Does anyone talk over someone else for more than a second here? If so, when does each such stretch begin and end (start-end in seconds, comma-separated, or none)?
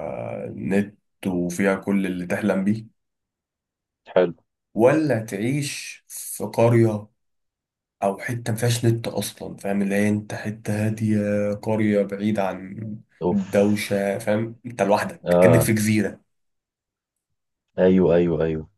none